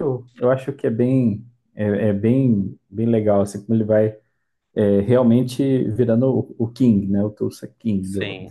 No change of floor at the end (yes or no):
no